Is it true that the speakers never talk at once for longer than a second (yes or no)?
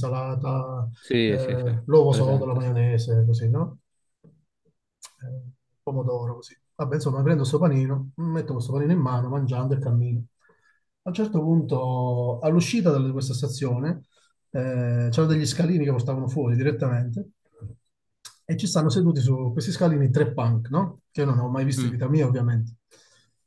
no